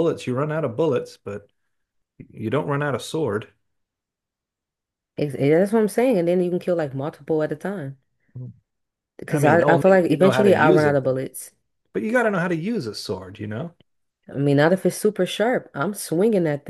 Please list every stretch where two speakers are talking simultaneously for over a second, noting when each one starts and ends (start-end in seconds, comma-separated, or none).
9.3-11.2